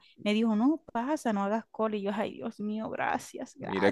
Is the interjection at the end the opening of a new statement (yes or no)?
yes